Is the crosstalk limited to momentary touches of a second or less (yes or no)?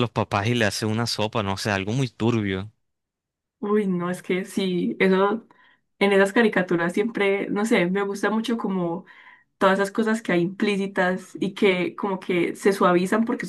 yes